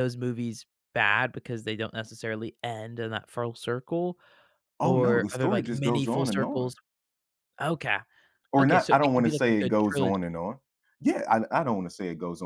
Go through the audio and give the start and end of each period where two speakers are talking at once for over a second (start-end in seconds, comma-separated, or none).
4.8-6.7, 8.6-10.2